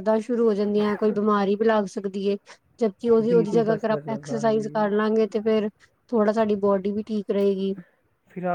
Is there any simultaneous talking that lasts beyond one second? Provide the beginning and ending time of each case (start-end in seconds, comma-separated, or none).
3.2-4.9